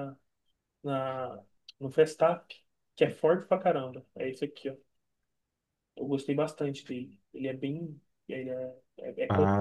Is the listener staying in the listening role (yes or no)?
yes